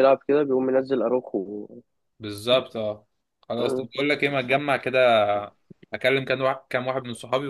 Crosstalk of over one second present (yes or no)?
no